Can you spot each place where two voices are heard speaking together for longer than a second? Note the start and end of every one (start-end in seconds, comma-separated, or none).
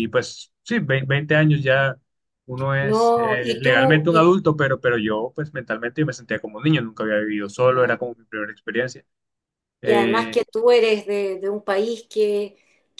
2.8-4.3